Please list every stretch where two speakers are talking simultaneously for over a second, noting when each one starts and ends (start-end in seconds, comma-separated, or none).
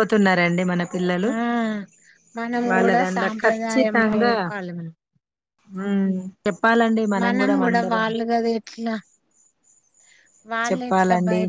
2.7-4.3